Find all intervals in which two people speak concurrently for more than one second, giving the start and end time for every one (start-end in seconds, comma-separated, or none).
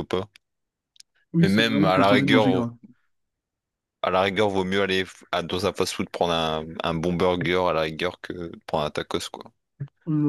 1.4-2.6